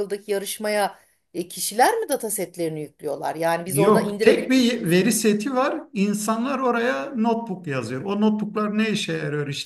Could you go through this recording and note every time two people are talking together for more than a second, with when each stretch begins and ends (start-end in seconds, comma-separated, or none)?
3.7-4.9